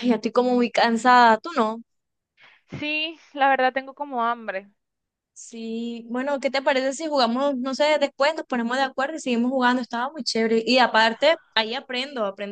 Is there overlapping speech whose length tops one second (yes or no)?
no